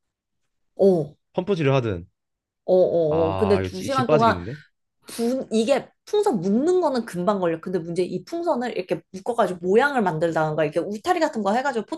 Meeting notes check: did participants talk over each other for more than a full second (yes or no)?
yes